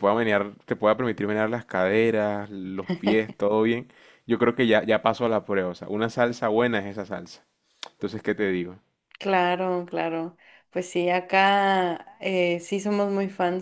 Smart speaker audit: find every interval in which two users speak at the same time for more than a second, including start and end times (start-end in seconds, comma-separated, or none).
none